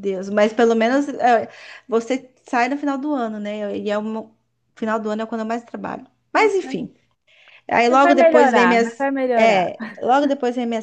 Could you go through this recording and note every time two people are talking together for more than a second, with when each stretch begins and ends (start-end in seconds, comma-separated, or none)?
7.9-9.7